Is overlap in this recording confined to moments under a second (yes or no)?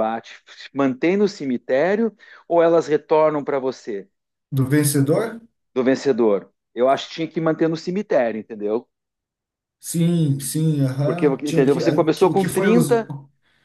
no